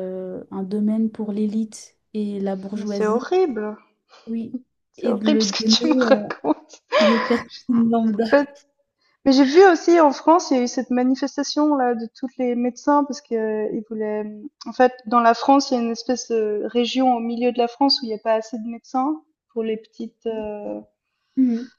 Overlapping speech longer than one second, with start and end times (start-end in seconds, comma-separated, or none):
5.0-6.2